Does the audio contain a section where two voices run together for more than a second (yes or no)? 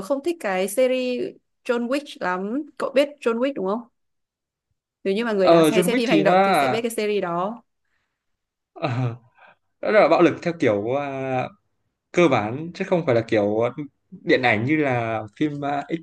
yes